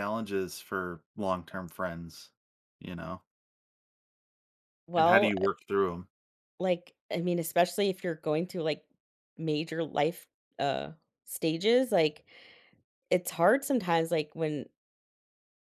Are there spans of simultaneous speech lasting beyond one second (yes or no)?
no